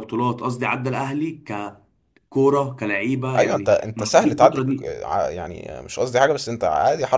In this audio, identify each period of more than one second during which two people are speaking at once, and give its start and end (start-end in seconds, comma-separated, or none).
3.4-4.9